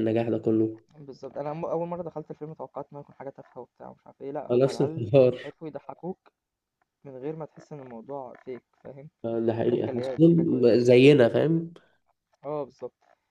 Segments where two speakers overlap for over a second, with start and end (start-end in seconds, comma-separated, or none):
9.6-11.4